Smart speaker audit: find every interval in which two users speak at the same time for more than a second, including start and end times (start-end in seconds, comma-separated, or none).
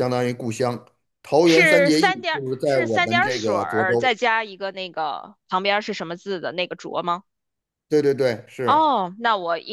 1.4-4.1